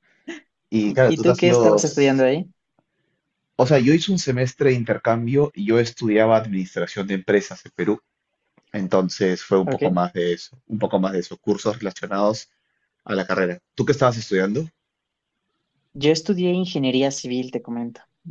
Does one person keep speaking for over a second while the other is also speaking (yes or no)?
yes